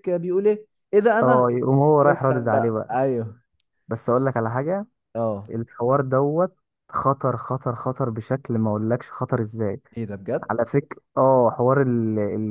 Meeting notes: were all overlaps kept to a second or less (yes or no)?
no